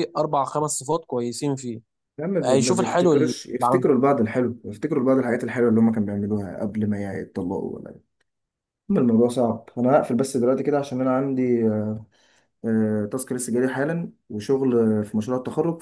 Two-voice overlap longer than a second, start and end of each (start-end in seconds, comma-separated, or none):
2.4-3.9